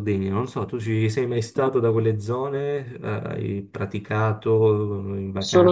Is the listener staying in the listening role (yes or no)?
no